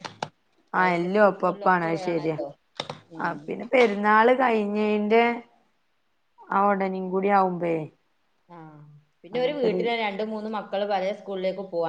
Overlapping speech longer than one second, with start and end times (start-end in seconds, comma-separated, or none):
0.8-2.4